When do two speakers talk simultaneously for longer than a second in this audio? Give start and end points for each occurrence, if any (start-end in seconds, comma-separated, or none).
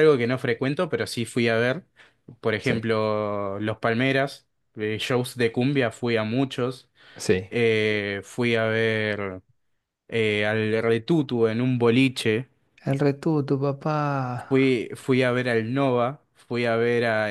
none